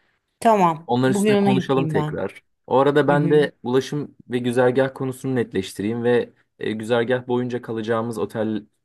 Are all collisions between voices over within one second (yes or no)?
no